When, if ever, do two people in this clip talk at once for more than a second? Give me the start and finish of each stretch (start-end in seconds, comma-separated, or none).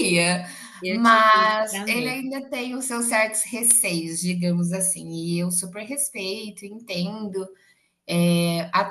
0.9-2.3